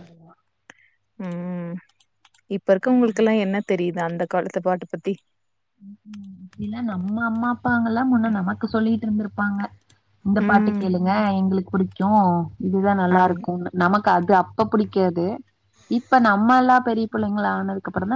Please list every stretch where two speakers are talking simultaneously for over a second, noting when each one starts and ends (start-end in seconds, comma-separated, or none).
none